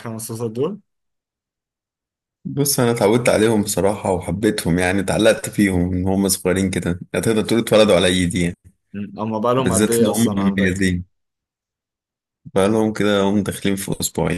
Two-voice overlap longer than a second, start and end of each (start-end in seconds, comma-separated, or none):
9.6-10.9